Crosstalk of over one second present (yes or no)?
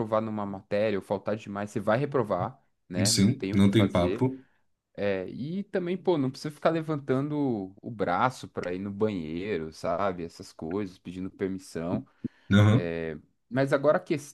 yes